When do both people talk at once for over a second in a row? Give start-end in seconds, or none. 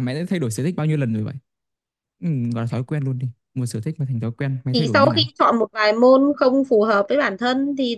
none